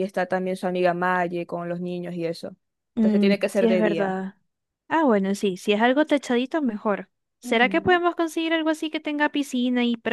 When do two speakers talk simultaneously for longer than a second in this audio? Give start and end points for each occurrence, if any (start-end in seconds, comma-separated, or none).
3.0-4.2